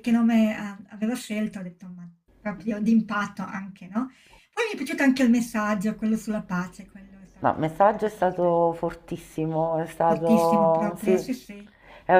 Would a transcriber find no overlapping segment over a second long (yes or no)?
no